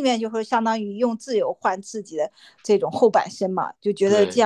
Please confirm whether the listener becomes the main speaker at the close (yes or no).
no